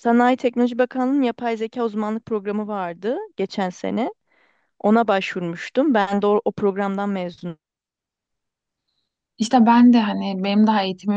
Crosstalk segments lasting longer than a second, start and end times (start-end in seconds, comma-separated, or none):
none